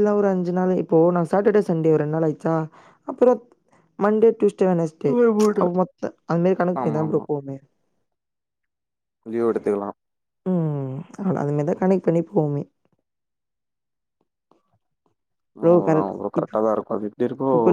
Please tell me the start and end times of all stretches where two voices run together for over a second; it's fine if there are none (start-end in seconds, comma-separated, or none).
none